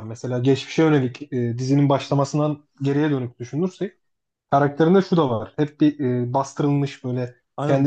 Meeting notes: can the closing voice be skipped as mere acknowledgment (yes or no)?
yes